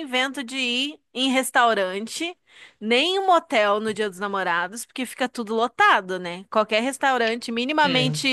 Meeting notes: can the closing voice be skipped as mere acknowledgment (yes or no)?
yes